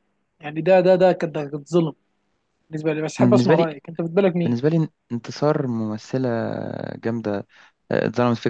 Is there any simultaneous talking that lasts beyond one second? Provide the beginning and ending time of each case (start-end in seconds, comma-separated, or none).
none